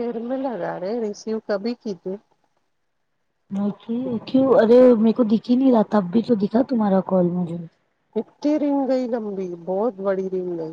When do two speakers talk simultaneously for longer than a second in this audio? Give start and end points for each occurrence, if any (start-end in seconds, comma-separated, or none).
none